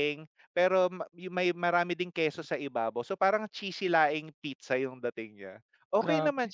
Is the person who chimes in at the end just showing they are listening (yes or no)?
yes